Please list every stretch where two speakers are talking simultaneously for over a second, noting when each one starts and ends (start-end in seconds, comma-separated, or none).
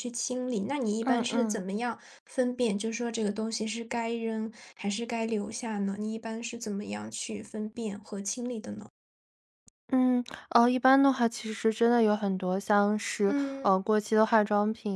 none